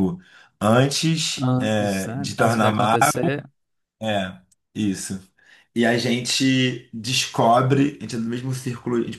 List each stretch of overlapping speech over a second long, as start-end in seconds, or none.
1.4-3.0